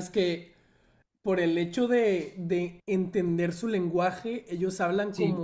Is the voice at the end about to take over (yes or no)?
no